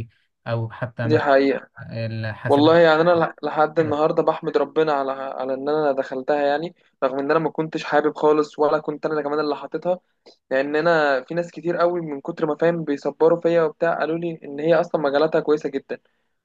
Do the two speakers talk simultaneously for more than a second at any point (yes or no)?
no